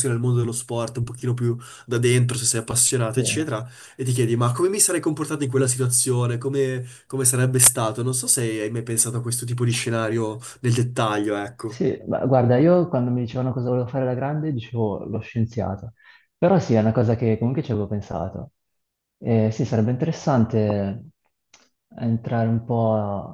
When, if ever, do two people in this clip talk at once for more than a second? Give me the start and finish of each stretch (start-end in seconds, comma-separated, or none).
none